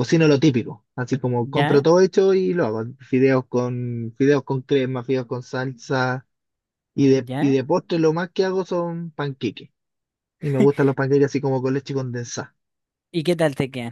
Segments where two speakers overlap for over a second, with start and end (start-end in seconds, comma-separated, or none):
none